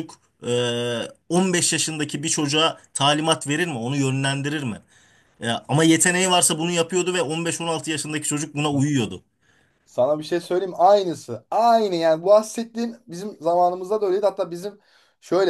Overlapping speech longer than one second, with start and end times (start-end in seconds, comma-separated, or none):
none